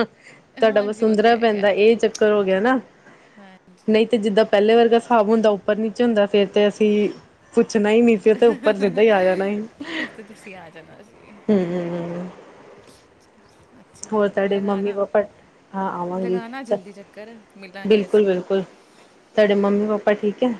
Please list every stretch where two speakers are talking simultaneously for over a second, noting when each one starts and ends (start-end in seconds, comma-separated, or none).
0.7-2.0